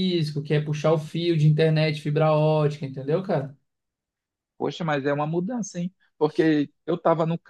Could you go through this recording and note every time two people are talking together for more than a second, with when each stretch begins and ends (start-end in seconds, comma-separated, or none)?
none